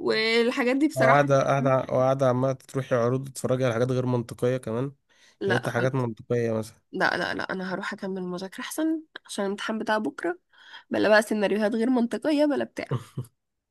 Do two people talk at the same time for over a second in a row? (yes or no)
no